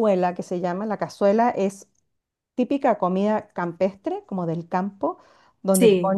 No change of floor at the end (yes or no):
yes